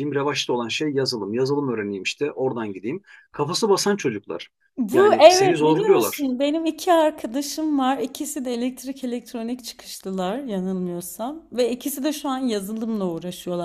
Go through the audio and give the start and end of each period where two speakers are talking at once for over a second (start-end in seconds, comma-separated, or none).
4.9-6.3